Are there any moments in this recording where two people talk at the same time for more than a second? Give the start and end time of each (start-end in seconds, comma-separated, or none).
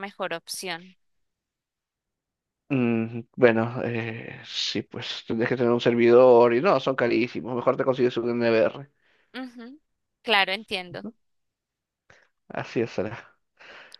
none